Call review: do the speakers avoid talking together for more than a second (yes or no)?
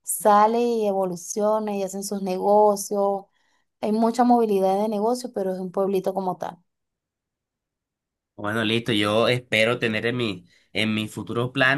yes